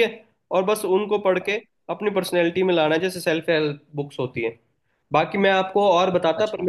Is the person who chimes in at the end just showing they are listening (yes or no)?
yes